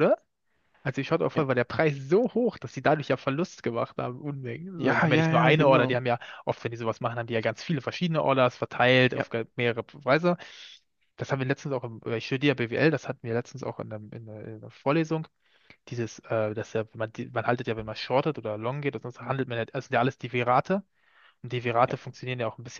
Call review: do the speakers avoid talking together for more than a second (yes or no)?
no